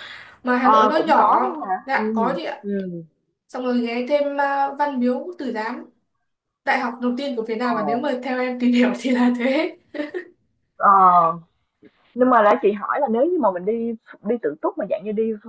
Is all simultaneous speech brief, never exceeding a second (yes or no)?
no